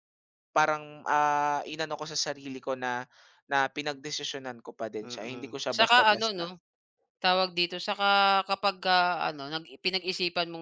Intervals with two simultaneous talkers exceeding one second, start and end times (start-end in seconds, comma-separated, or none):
5.0-6.5